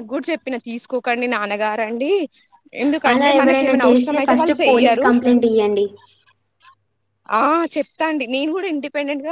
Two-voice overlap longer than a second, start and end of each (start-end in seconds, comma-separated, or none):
3.1-5.0